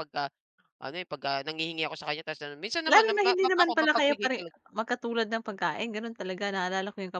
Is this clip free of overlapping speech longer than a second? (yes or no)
no